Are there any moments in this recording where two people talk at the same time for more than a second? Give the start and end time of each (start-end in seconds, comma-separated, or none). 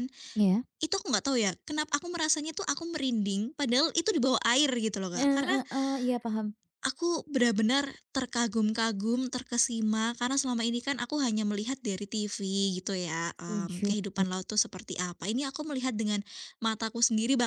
none